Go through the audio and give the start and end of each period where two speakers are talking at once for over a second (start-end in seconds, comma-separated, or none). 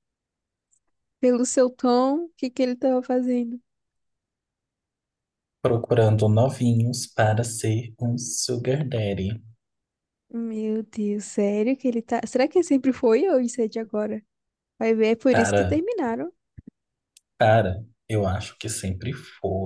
none